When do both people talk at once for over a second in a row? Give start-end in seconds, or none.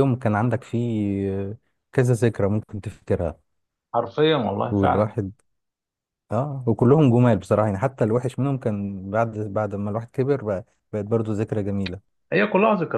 none